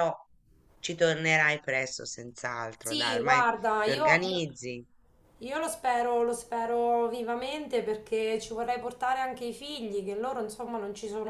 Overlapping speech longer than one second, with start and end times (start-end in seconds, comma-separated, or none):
2.8-4.4